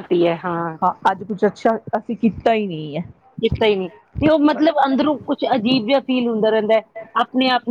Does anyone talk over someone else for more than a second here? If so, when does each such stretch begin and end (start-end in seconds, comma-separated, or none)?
4.5-5.9